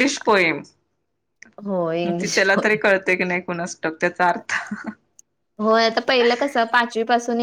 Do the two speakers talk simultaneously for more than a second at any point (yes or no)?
no